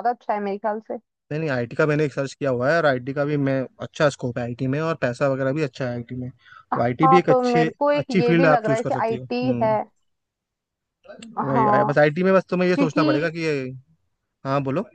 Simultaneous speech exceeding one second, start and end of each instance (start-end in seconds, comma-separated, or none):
7.0-9.7